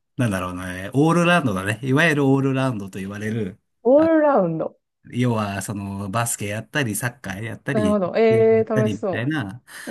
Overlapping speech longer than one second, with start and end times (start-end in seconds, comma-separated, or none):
7.7-9.3